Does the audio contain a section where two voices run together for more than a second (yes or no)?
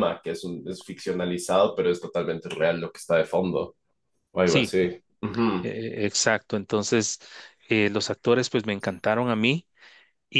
no